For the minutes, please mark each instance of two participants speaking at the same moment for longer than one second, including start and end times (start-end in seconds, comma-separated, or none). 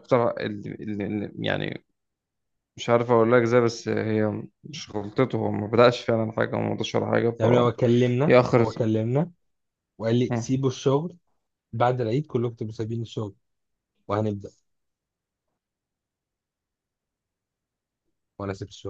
none